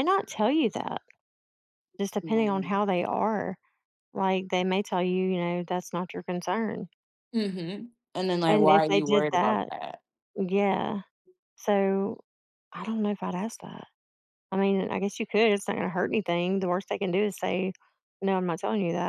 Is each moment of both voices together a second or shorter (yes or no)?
no